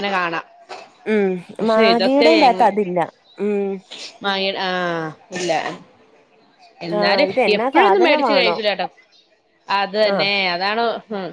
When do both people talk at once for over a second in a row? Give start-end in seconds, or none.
7.0-8.5